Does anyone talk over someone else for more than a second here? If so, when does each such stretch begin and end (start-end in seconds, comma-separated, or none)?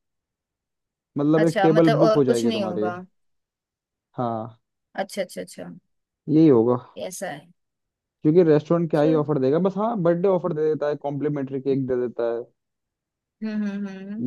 1.4-2.9